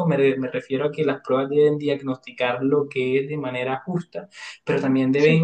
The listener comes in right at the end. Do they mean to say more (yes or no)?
no